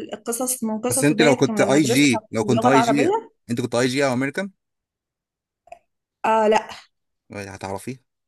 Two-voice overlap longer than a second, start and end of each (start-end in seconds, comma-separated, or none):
0.9-3.1